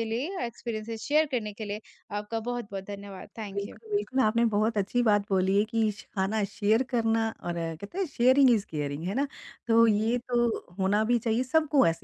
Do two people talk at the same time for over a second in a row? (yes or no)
no